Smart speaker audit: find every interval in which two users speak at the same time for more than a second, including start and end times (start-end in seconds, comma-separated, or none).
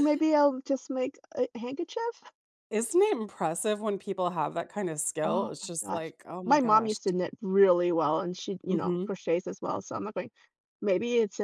5.2-7.0